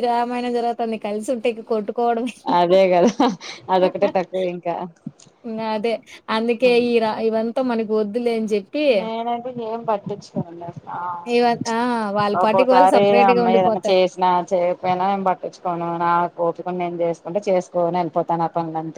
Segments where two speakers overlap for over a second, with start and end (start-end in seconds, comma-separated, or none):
12.4-14.0